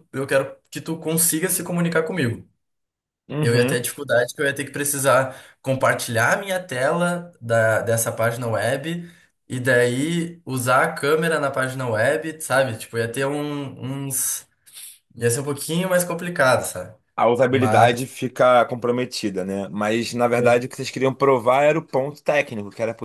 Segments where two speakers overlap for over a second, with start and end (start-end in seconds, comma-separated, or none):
none